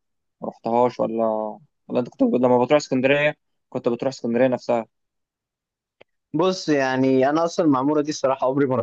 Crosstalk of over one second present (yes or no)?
no